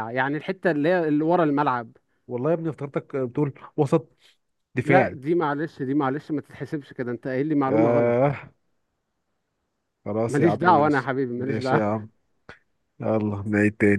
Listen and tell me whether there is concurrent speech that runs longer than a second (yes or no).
yes